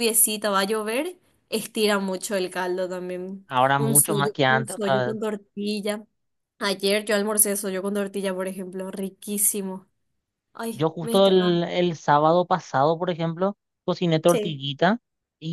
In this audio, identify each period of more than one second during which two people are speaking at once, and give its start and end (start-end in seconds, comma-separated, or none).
3.5-5.2